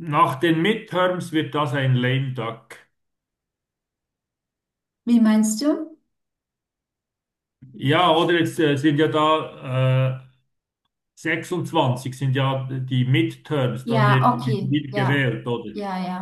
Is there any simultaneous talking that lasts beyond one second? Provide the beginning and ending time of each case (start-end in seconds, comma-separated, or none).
13.8-15.3